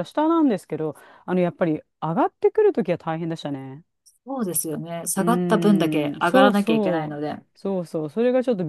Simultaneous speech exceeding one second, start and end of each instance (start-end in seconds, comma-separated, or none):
5.2-7.5